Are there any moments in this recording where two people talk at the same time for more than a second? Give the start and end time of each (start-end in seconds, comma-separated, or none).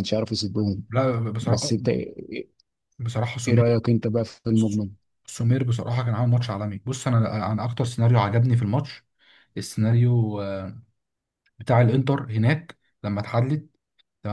none